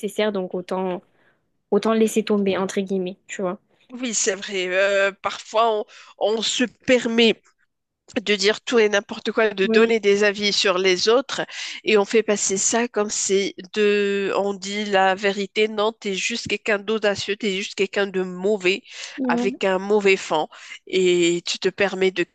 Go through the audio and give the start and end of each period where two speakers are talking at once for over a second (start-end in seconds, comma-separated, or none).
none